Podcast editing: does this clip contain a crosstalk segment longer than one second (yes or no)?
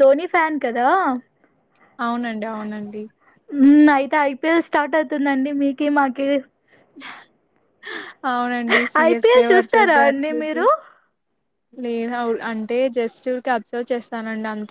yes